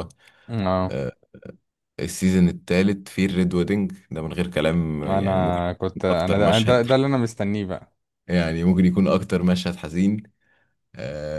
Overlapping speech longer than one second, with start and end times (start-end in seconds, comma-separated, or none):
5.0-6.8